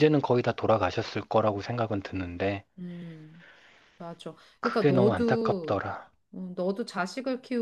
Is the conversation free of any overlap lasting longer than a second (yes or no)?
no